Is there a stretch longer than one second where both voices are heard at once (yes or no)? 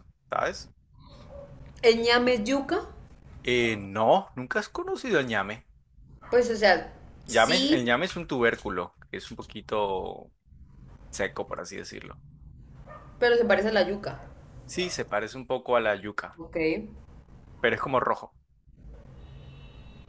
no